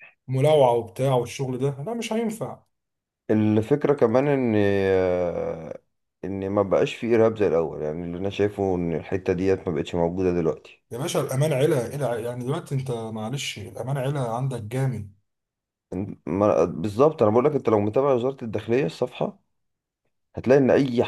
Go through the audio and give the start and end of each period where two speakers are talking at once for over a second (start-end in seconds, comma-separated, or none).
none